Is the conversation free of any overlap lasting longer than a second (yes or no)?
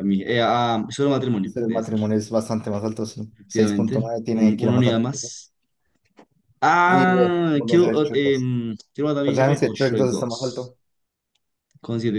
no